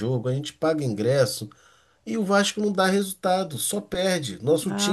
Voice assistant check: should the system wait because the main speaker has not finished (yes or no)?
no